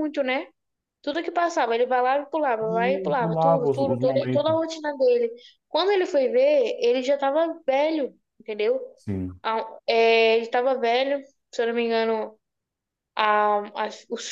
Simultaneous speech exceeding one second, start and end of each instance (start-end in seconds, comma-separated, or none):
2.7-4.6